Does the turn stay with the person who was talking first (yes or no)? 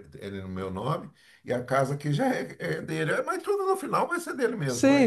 no